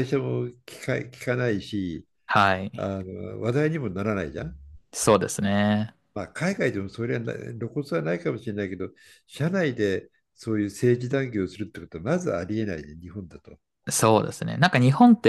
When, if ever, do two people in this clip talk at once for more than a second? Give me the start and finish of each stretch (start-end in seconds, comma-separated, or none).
none